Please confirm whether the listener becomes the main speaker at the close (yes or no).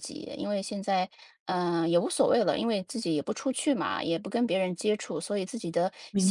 no